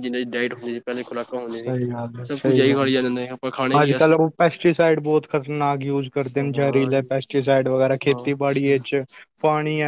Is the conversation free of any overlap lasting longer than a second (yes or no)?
yes